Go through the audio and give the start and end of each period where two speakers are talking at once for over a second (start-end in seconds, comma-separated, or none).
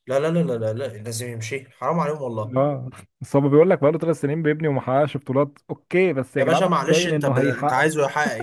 6.4-7.9